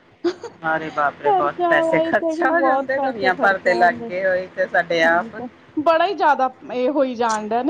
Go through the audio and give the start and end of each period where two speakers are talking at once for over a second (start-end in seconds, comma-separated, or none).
1.3-5.3